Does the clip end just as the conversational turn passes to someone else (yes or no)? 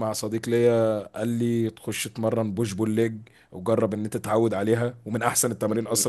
yes